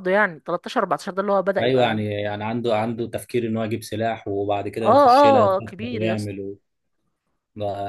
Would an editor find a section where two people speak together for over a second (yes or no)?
yes